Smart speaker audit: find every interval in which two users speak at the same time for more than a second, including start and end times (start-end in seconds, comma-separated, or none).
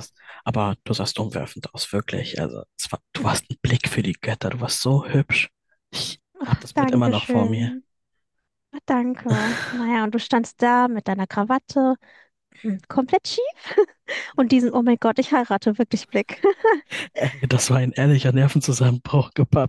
6.4-7.7